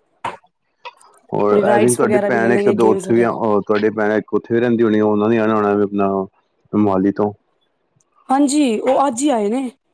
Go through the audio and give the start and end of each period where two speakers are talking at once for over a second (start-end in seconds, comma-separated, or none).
1.7-3.4